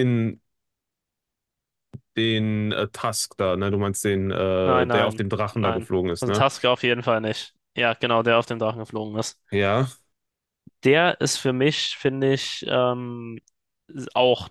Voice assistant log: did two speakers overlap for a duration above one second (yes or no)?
yes